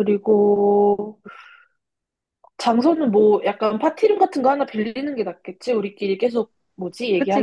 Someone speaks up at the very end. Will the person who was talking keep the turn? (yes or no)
no